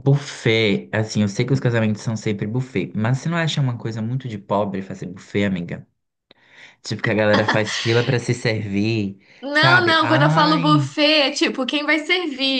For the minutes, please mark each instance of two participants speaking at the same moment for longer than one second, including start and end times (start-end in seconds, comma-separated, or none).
9.4-10.9